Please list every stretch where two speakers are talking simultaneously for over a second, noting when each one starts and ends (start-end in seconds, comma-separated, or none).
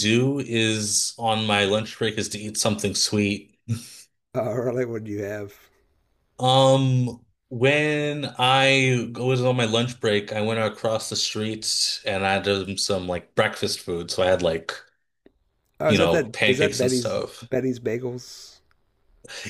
15.9-17.5